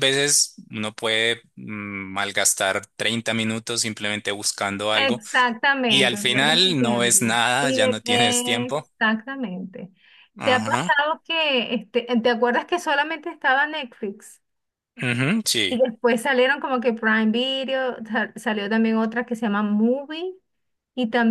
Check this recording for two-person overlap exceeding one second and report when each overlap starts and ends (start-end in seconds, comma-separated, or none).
5.9-8.9